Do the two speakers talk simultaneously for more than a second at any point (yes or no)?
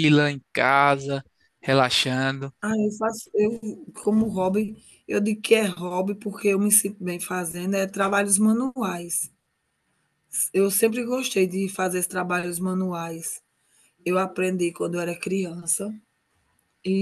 no